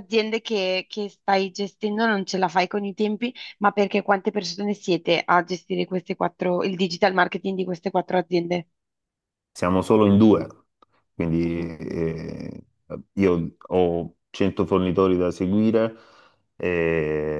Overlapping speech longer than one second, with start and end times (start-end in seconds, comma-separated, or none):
none